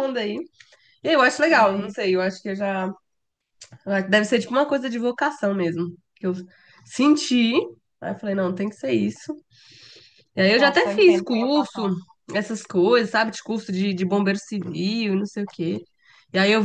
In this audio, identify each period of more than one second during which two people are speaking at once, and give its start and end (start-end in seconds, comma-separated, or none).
10.6-11.9